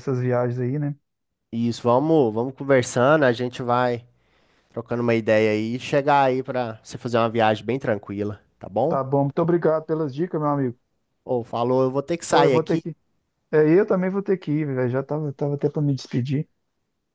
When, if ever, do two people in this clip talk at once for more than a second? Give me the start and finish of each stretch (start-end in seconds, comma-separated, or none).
none